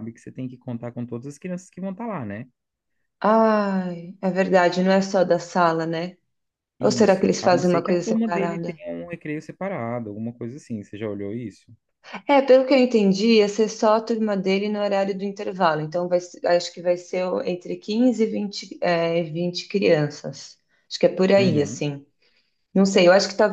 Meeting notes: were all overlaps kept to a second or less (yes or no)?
no